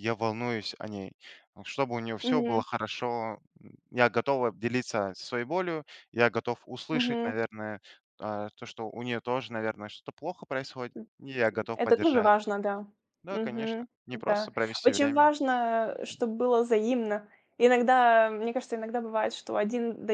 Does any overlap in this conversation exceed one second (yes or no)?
yes